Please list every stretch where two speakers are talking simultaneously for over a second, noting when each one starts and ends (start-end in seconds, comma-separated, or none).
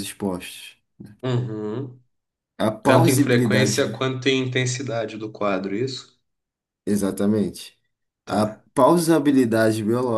2.9-4.1